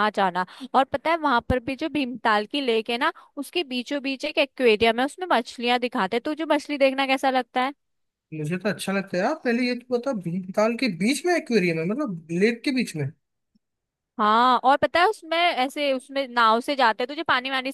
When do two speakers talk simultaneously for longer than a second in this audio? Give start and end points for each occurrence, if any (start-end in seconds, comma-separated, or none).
none